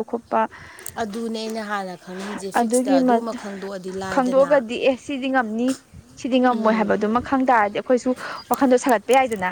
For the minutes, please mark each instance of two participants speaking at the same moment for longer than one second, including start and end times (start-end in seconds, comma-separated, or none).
none